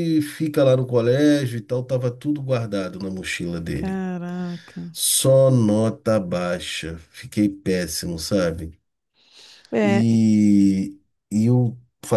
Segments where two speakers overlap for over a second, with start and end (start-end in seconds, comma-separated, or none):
none